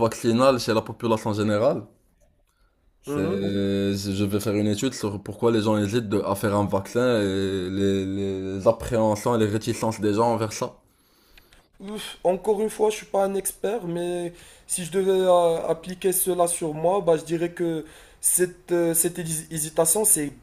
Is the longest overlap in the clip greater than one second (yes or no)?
no